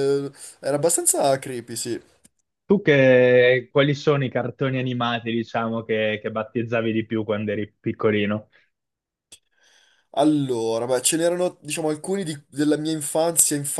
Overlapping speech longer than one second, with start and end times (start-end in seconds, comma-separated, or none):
none